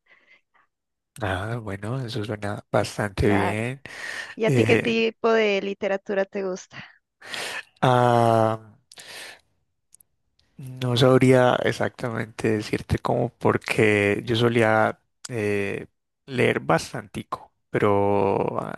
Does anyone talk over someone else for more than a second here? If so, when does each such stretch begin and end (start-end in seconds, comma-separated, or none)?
none